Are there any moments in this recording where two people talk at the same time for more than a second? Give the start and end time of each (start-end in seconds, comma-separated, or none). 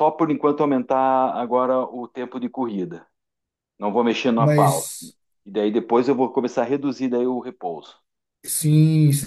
none